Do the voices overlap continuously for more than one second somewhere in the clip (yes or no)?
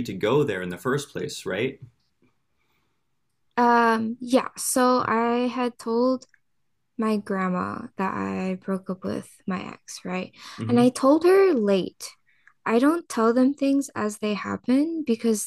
no